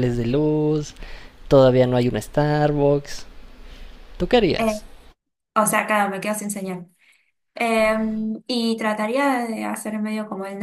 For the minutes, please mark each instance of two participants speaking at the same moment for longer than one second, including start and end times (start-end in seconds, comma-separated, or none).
none